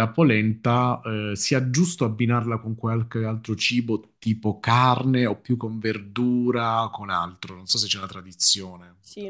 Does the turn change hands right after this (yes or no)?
yes